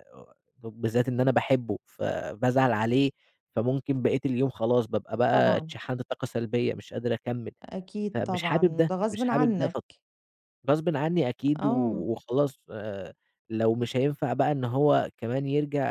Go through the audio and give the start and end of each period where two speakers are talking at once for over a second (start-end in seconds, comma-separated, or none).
8.1-9.8